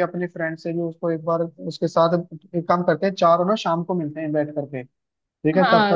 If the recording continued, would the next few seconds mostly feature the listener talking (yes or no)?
yes